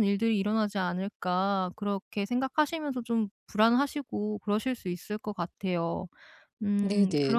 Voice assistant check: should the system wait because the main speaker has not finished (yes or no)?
no